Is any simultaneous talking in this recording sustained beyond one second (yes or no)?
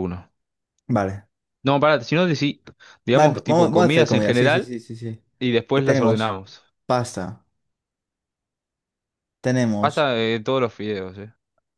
yes